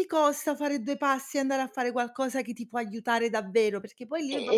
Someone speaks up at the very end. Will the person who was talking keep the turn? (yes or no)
yes